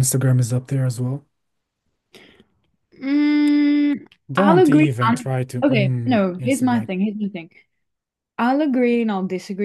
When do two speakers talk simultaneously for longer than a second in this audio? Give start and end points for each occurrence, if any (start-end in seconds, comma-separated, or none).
4.3-6.9